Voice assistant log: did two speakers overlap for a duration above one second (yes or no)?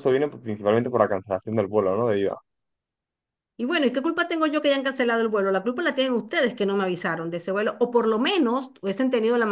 no